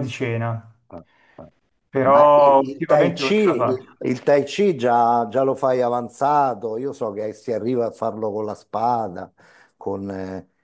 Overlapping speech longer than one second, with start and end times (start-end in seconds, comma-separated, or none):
2.0-3.9